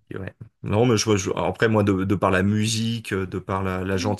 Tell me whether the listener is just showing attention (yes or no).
yes